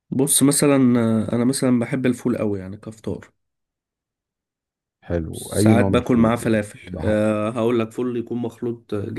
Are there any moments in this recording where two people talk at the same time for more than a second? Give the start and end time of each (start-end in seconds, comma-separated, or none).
5.3-7.2